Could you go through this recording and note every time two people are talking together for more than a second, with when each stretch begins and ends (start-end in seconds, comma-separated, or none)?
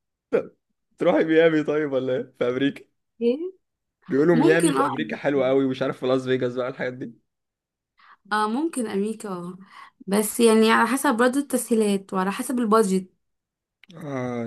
4.3-5.5